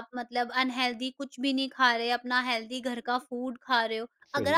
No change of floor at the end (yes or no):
yes